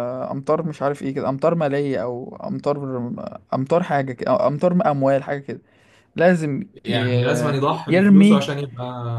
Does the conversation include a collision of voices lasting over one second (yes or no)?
yes